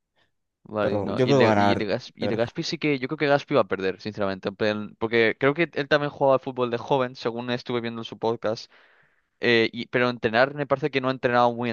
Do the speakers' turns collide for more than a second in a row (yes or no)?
yes